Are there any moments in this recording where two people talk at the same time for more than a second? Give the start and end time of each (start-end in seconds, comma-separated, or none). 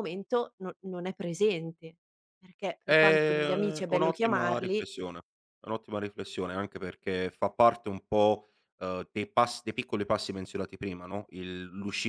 2.8-4.9